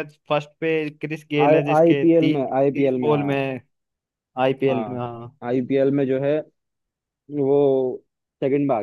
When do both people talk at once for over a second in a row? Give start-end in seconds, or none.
1.5-3.4